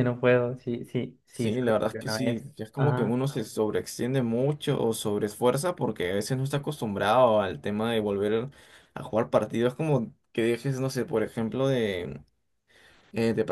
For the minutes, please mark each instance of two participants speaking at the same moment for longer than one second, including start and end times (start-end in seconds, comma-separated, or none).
1.3-3.2